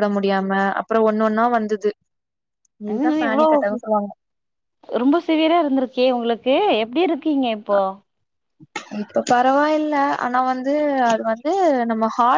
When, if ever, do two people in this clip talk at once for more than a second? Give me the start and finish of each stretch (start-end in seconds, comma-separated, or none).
none